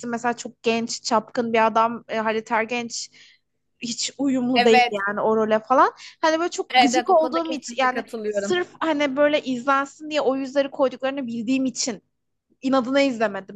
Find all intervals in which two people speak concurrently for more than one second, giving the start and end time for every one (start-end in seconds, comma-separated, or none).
6.7-8.6